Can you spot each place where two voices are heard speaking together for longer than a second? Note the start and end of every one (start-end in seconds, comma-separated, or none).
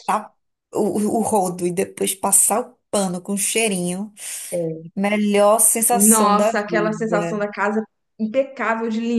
5.9-7.4